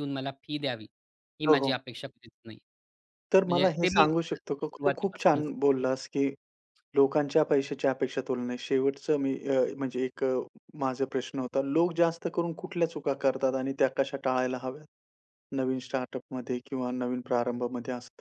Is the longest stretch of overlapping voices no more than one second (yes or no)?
no